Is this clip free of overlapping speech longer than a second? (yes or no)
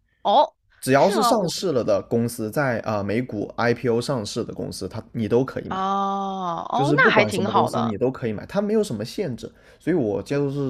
no